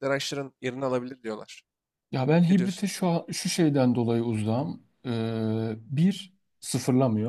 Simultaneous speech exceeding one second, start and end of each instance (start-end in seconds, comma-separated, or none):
none